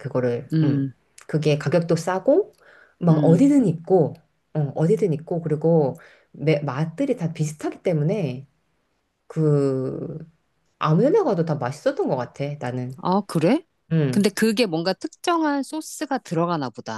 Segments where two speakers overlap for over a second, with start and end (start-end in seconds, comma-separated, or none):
none